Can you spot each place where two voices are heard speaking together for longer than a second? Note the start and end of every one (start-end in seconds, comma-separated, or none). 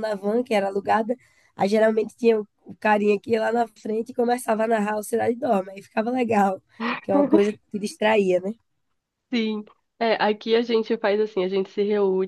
none